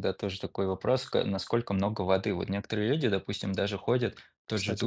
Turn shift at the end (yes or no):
no